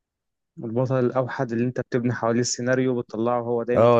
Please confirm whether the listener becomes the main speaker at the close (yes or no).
yes